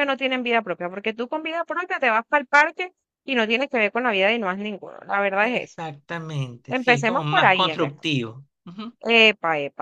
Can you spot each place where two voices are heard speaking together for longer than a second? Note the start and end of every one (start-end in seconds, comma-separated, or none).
6.7-8.1